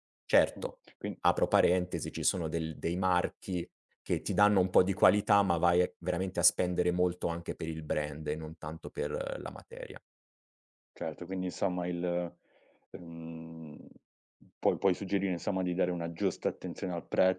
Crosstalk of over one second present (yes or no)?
no